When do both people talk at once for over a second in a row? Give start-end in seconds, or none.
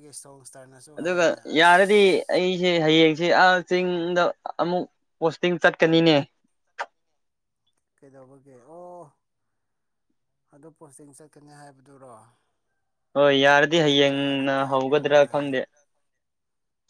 13.8-15.5